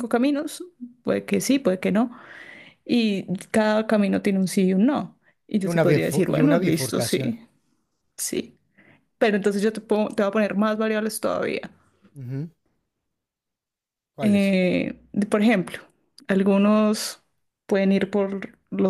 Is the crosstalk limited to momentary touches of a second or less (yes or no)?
no